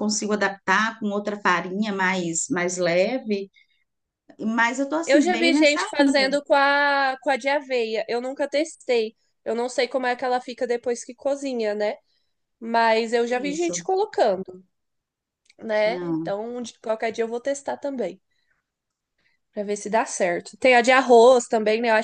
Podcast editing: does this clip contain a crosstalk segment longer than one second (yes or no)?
yes